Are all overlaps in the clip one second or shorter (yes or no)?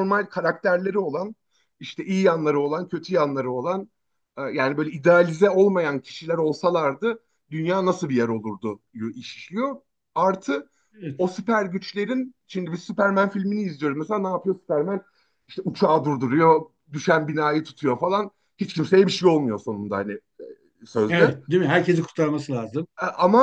yes